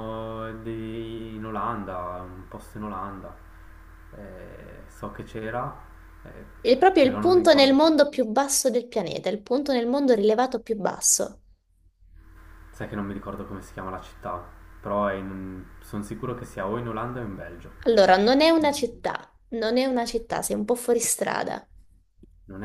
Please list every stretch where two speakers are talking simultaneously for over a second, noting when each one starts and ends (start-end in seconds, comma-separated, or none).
7.0-8.3